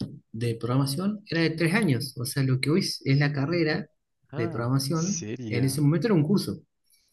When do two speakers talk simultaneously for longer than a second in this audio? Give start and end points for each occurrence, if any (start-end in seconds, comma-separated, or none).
4.3-5.8